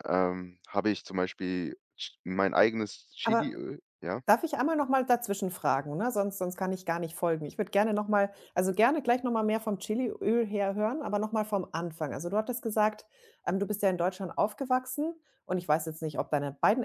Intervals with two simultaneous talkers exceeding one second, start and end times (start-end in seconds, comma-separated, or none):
none